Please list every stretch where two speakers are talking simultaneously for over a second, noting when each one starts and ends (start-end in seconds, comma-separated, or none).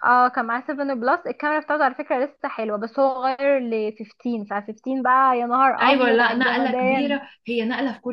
5.8-7.2